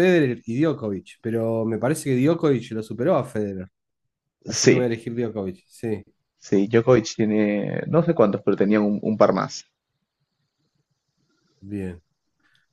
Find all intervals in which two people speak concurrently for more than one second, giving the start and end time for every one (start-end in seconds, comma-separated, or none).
none